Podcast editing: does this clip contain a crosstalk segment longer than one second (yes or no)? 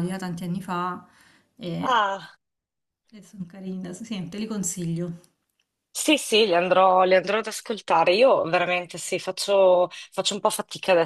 no